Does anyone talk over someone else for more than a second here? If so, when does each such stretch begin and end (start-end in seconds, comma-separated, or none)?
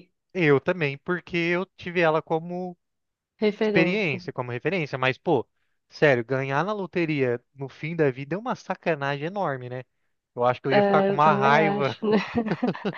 10.7-12.0